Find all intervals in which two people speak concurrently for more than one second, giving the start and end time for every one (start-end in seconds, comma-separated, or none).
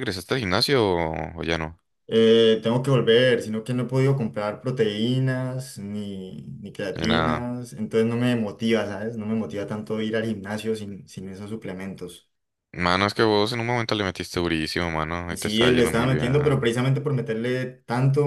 15.3-16.7